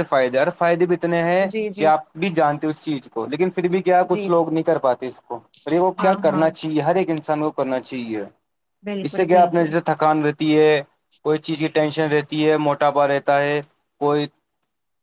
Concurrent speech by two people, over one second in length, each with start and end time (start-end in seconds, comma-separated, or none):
none